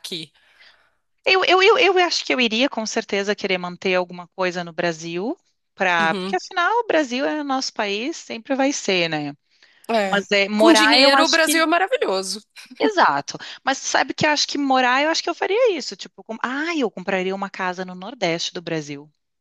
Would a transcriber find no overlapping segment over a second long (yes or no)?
no